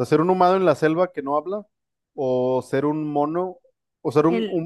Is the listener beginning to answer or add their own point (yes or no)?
no